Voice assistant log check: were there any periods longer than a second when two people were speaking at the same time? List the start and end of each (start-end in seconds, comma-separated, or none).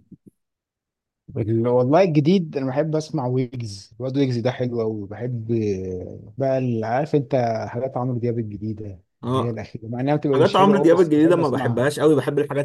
10.3-11.9